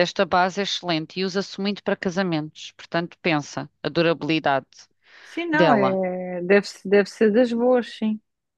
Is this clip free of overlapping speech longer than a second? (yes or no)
yes